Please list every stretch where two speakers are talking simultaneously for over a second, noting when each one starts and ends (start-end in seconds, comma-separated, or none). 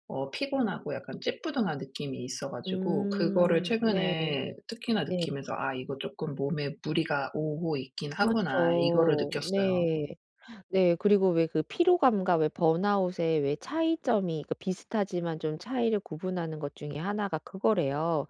2.6-4.1, 8.2-9.9